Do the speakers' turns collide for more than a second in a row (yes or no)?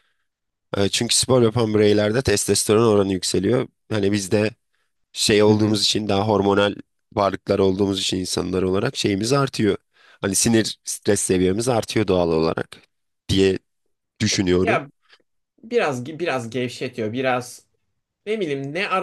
no